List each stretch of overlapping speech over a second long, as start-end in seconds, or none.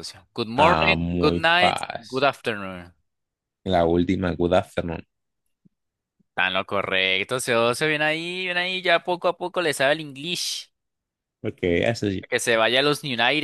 0.6-2.3